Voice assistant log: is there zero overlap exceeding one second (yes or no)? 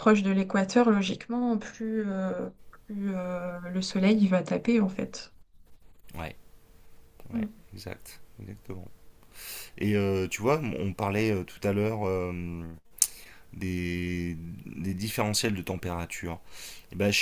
yes